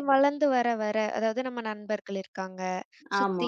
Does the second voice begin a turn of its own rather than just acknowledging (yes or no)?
no